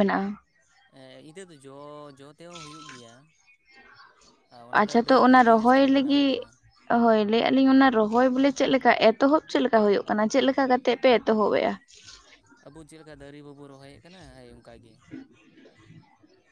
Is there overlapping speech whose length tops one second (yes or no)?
yes